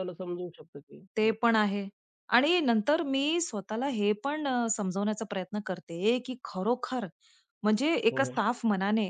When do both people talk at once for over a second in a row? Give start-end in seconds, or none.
none